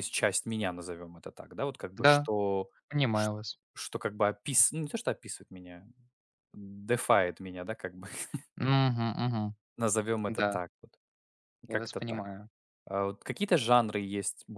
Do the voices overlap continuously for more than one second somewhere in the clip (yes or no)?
no